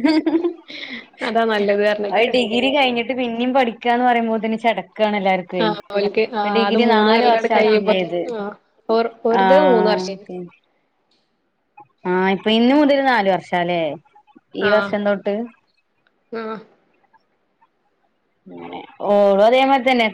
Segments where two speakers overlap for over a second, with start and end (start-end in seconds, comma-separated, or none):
5.6-7.9